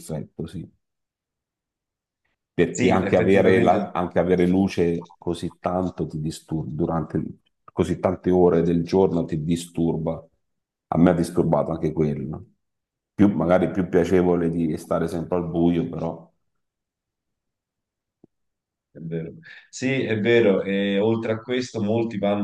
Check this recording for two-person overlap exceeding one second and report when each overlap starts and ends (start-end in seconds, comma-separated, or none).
2.7-3.9